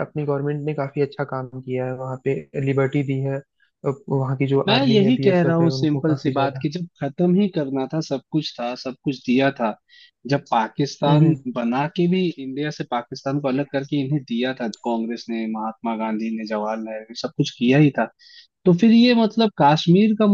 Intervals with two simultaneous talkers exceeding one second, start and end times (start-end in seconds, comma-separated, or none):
4.7-6.6